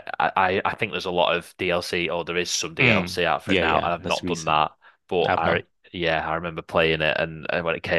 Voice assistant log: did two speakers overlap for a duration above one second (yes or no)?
yes